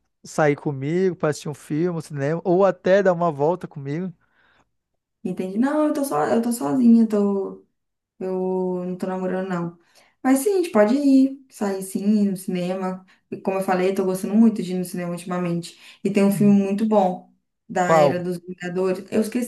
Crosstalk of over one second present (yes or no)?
no